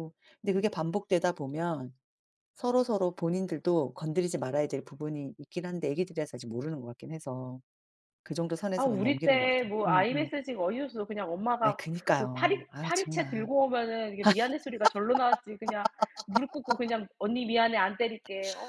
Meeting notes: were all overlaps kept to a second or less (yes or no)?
no